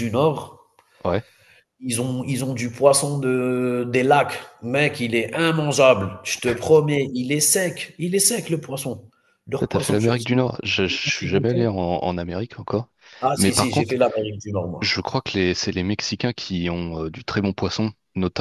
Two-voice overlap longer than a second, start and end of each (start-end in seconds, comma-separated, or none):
none